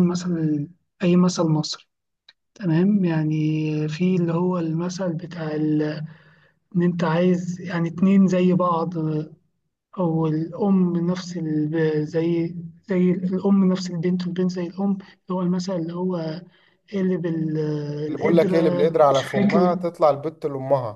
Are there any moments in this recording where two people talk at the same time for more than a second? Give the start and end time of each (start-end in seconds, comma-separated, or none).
18.2-19.7